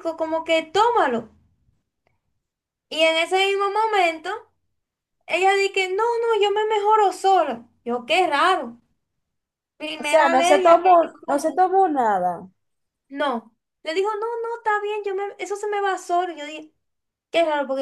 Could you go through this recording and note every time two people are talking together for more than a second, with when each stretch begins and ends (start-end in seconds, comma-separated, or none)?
10.0-11.6